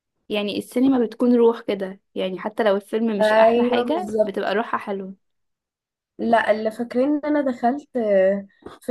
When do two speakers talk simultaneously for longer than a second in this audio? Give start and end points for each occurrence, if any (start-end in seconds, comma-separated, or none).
3.2-4.5